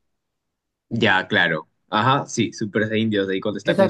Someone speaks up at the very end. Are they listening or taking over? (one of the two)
taking over